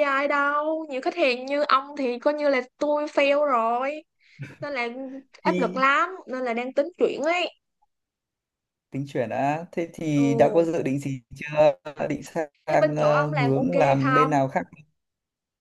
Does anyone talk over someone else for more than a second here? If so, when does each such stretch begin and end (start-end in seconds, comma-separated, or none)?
12.7-14.3